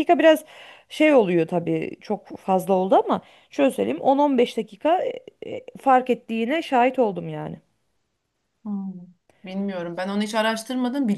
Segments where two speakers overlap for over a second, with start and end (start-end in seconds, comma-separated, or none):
none